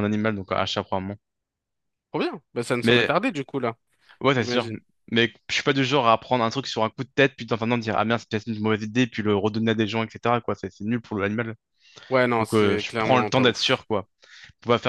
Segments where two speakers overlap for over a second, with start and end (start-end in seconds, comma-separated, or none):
12.4-13.8